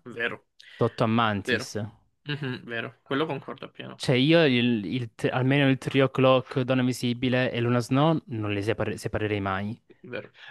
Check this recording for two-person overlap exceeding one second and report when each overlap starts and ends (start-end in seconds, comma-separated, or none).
none